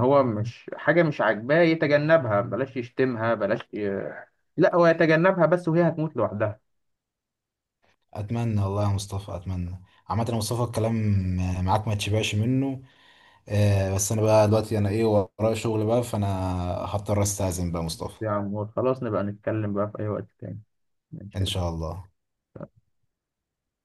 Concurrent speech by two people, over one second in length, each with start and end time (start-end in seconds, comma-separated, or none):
none